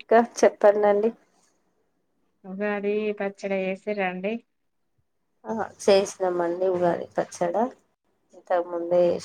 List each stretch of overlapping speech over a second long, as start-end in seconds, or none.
none